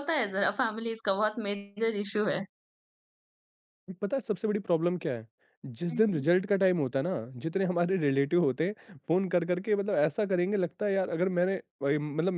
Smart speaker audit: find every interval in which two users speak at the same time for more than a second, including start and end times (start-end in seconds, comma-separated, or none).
none